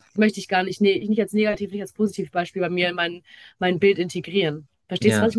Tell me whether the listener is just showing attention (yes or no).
no